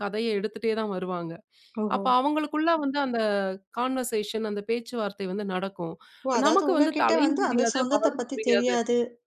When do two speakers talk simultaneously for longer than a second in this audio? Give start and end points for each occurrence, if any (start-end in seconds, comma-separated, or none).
6.5-8.7